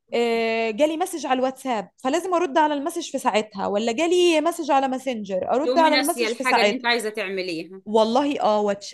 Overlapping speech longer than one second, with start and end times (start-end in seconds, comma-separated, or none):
5.7-6.8